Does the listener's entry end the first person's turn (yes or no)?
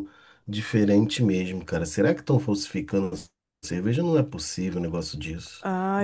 yes